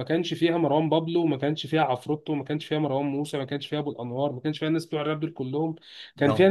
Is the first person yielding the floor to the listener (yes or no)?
no